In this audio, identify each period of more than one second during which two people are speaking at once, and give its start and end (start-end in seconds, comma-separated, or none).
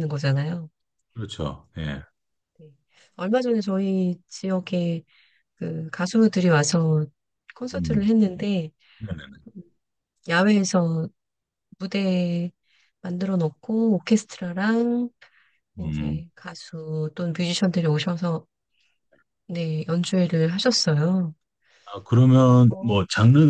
none